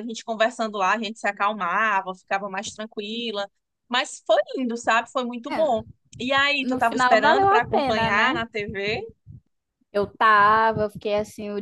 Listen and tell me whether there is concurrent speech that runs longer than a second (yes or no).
yes